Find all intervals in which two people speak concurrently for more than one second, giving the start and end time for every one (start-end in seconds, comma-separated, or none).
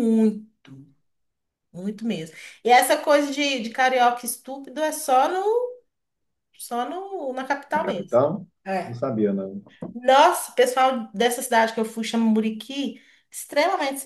none